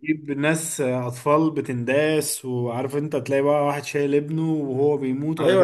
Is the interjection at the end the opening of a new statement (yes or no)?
yes